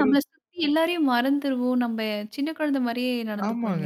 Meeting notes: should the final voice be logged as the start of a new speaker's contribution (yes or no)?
yes